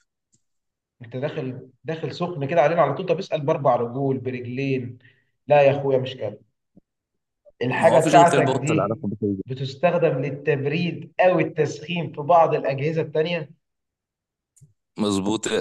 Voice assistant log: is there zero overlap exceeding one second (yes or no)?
no